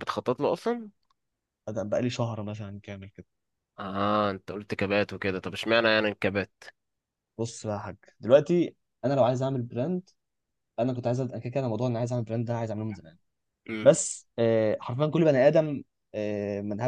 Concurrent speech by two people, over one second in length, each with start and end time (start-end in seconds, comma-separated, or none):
none